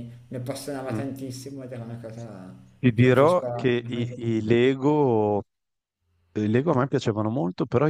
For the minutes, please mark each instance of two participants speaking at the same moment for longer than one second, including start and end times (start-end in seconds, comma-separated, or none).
2.9-4.5